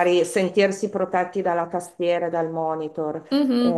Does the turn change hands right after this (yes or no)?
yes